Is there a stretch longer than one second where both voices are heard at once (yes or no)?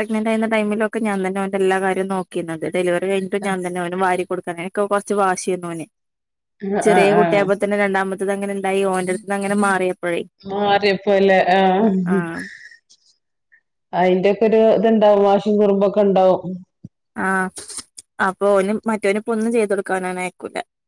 no